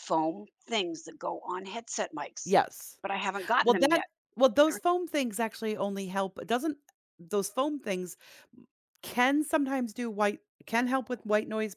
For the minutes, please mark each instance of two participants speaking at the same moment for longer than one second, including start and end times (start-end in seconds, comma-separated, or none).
none